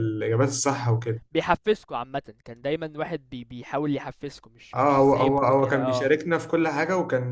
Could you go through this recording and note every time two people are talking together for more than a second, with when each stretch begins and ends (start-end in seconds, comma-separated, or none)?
4.7-6.1